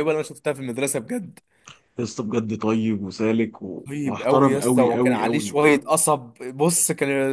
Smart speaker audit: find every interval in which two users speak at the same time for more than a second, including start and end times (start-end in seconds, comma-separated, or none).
3.9-5.8